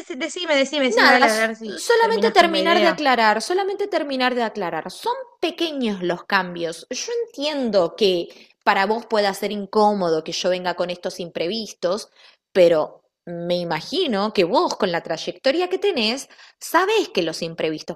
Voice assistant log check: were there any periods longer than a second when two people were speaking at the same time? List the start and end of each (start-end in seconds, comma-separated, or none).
0.9-3.0